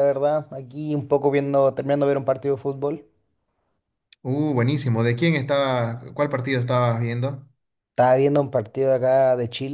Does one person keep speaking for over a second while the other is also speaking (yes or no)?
no